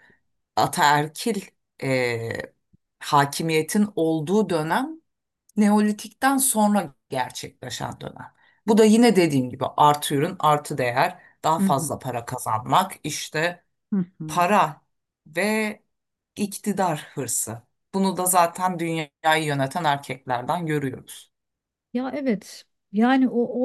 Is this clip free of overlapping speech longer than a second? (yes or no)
yes